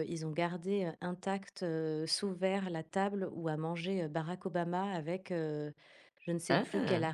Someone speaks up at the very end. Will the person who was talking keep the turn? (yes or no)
yes